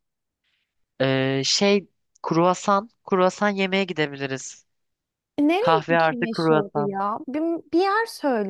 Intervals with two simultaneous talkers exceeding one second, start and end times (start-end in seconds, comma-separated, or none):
5.6-7.0